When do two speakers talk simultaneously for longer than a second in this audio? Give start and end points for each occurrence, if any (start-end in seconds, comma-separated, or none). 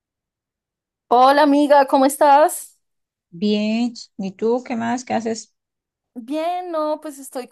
none